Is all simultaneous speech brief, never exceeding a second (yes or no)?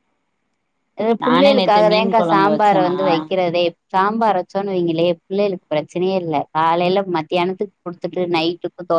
no